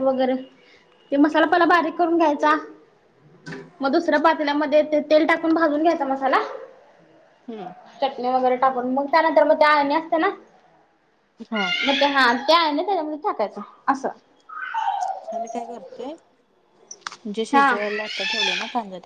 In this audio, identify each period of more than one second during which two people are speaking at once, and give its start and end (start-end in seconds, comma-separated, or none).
none